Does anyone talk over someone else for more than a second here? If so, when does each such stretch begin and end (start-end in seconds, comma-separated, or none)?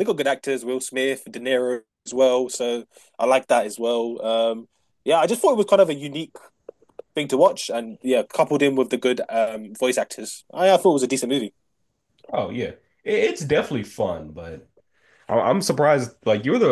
none